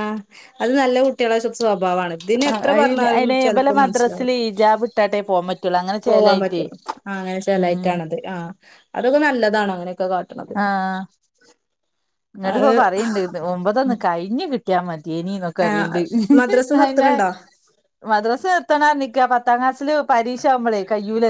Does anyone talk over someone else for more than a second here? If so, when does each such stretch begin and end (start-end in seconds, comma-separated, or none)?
2.7-4.3